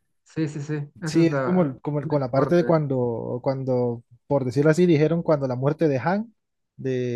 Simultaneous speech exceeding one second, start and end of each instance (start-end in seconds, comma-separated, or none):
1.0-2.6